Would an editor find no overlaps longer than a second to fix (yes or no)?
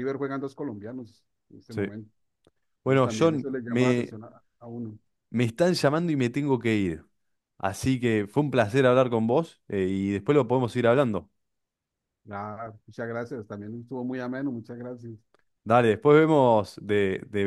no